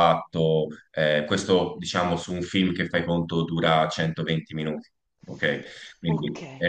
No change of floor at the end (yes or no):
no